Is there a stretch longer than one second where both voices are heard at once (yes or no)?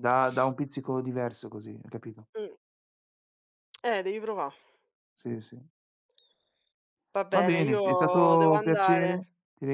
yes